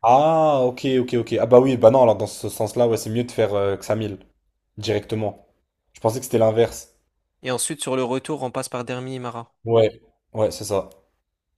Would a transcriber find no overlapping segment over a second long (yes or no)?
yes